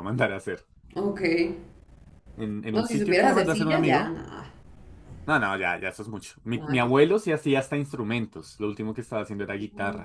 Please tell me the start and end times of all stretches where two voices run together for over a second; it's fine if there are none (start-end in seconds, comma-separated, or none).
2.7-4.2